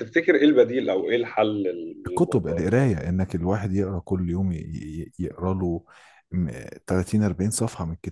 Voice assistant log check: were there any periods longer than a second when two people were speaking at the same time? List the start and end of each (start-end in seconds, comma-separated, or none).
none